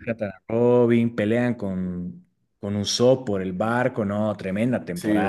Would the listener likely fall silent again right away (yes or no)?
no